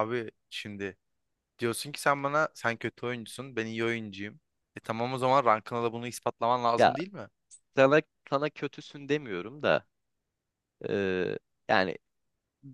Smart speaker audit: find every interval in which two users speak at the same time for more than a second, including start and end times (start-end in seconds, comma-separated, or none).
none